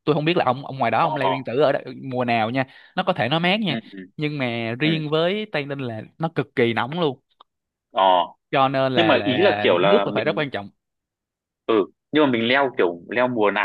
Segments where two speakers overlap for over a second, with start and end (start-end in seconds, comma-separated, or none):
8.9-10.4